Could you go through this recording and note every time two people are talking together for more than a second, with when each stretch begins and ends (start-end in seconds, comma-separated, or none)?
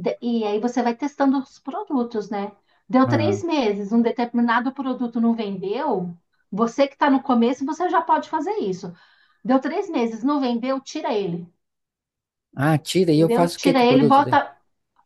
13.2-14.4